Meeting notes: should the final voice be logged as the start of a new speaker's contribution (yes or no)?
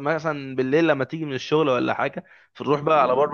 no